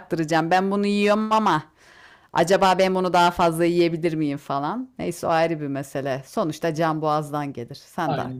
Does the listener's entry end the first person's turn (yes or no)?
yes